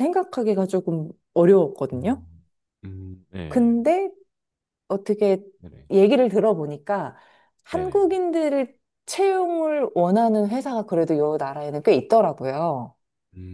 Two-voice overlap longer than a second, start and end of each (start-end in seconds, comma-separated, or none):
none